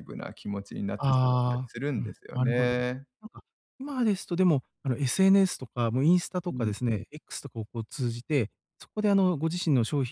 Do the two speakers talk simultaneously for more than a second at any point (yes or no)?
yes